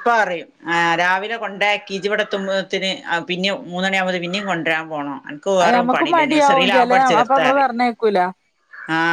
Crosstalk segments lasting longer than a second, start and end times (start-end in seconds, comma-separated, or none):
5.6-7.7